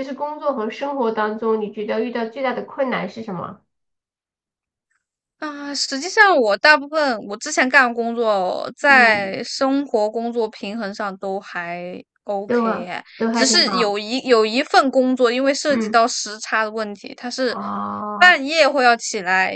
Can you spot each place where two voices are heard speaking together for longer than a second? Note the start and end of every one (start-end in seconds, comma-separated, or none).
12.4-13.9